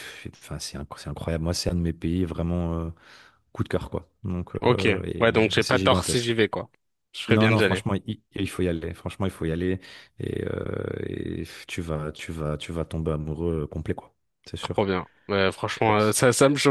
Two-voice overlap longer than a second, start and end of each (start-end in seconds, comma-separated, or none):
4.6-6.4